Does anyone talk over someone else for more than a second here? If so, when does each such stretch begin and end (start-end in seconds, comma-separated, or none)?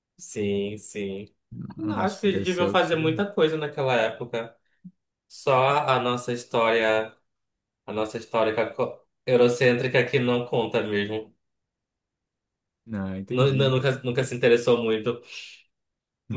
1.8-3.1